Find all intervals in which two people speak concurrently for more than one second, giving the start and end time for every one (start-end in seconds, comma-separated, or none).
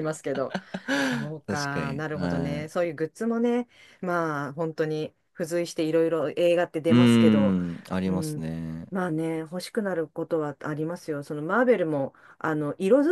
1.5-2.9